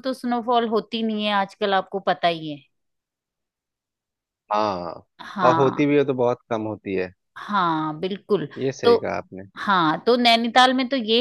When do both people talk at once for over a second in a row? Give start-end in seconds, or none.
none